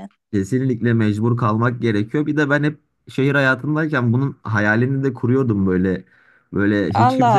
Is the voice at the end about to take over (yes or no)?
yes